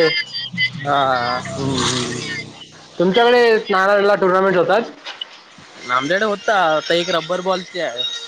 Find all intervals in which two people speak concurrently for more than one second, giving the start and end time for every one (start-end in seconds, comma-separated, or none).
none